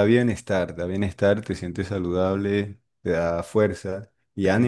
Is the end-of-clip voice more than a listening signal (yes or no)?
no